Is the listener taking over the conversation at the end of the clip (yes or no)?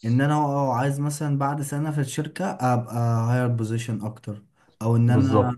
no